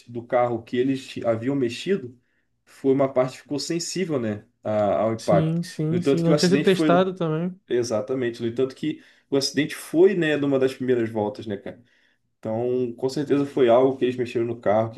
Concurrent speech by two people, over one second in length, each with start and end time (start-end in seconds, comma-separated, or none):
5.2-7.0